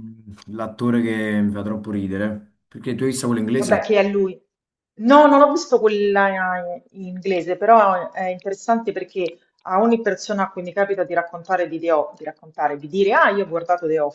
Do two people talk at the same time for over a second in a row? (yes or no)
no